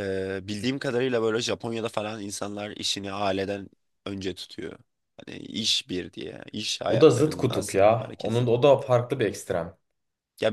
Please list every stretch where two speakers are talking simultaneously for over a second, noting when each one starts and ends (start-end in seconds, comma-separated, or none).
6.9-8.5